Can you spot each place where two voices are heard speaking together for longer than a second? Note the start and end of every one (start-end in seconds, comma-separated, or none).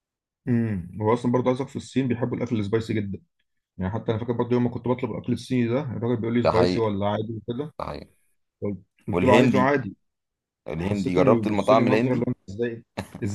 10.8-12.3